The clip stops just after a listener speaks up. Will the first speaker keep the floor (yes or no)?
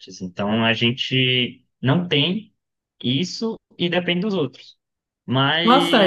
no